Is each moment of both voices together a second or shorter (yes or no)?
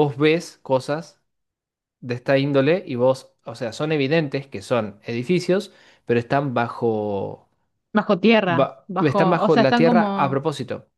no